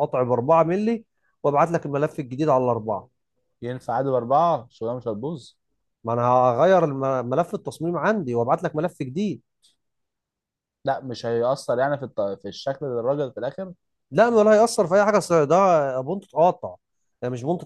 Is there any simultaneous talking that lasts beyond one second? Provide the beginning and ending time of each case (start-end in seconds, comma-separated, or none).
none